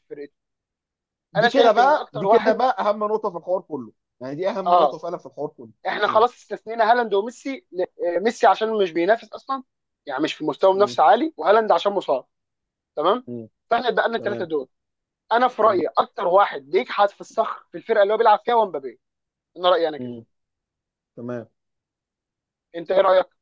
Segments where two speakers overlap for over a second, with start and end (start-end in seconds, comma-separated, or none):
1.4-2.6